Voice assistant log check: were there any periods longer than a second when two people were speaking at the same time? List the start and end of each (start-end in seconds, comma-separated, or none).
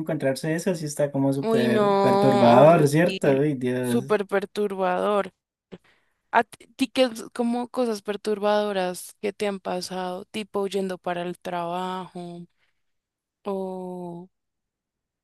1.4-2.9